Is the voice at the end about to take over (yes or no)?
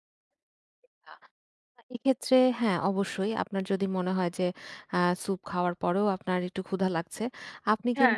no